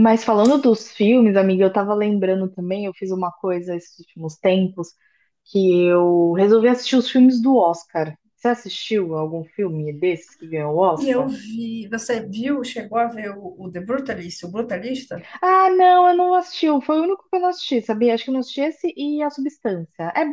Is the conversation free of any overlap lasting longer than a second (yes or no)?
yes